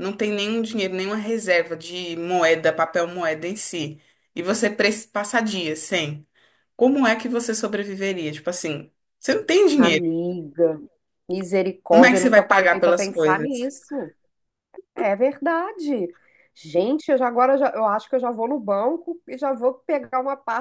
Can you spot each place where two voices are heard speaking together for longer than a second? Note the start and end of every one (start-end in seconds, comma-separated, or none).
11.9-13.7